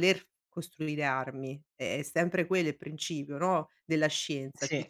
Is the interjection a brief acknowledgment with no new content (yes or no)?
yes